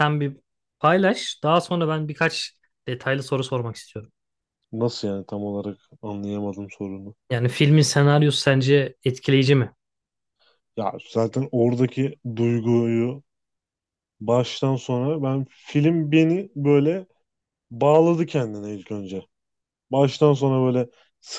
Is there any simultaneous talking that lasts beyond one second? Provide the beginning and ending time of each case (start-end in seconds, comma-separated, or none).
none